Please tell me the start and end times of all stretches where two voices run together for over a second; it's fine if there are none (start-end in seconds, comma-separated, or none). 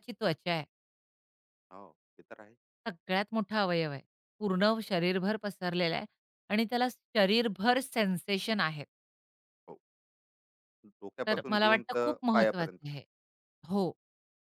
11.3-12.9